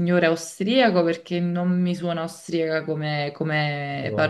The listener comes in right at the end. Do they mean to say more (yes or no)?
no